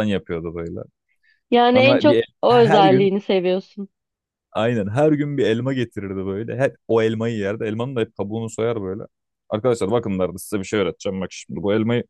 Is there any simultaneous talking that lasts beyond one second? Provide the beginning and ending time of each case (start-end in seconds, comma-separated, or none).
1.8-3.1